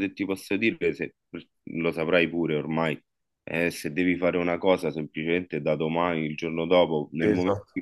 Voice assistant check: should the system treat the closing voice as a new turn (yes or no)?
no